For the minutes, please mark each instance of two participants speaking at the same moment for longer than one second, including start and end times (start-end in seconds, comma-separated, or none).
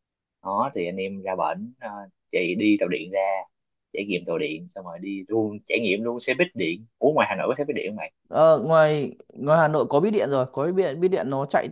none